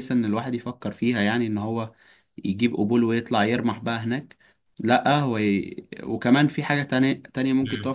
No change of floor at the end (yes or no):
no